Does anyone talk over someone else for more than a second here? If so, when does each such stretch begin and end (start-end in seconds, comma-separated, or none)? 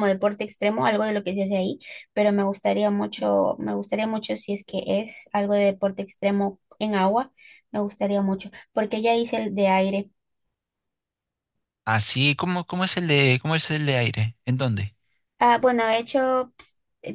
none